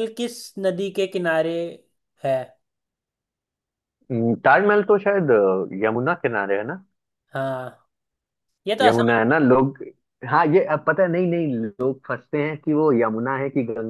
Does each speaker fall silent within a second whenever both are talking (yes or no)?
yes